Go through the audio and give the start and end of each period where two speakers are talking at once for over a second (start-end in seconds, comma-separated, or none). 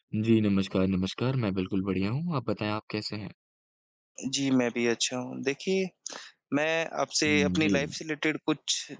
none